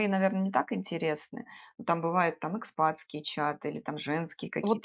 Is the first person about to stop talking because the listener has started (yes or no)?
yes